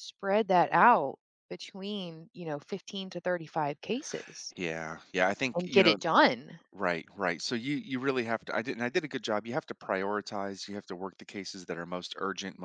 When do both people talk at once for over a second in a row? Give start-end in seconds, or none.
none